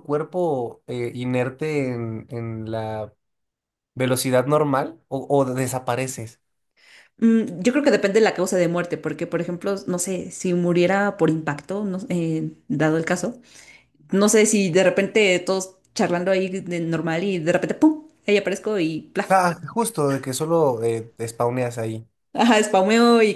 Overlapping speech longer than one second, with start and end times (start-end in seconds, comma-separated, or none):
none